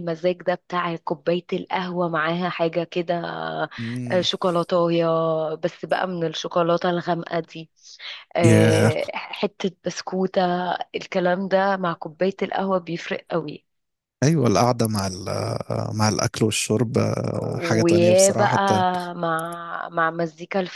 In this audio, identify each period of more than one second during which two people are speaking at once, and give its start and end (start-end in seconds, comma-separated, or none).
17.4-18.6